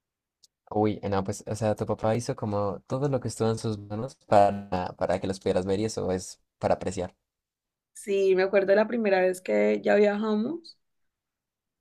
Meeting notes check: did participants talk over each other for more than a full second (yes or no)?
no